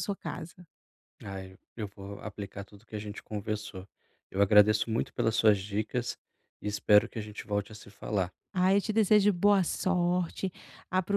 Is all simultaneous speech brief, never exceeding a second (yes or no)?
yes